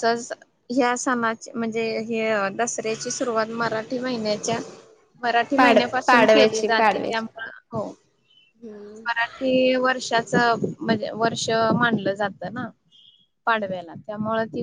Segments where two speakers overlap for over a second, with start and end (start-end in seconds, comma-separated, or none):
5.6-7.2